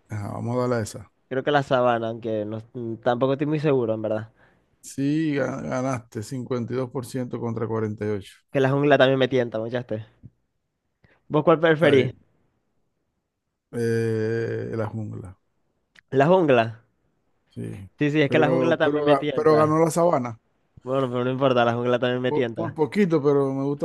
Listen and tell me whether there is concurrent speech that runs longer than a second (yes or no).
yes